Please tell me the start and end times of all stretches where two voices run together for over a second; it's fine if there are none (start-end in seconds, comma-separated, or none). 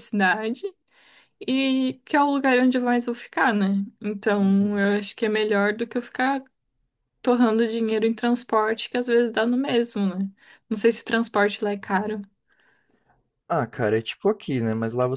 none